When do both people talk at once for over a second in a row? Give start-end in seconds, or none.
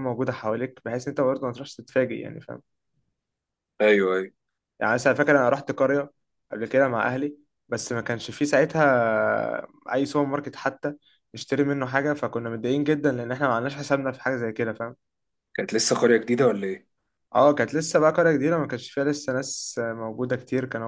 none